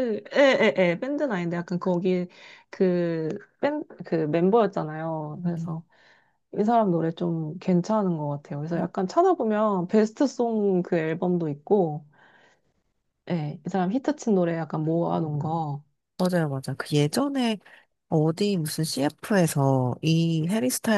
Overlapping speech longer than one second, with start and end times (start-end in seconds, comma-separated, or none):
none